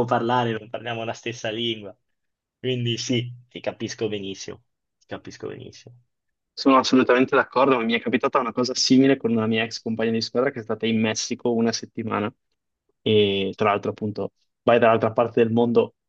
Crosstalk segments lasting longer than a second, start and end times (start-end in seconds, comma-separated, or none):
none